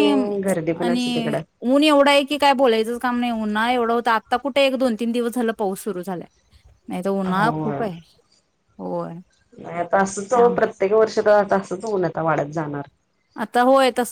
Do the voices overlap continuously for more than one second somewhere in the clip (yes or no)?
no